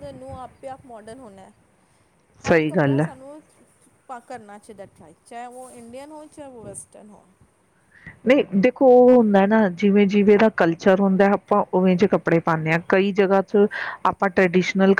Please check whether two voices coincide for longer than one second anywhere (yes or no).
no